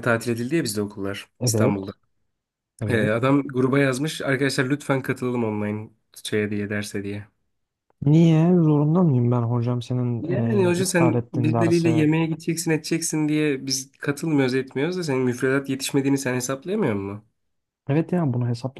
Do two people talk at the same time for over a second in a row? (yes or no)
yes